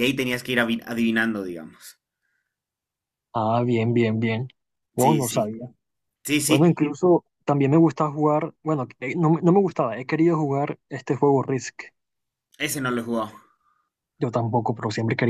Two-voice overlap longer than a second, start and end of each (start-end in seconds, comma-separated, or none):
none